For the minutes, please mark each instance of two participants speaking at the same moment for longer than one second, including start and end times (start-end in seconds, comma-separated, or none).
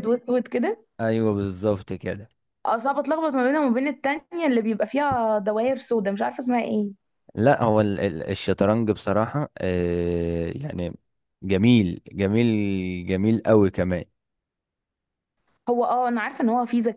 none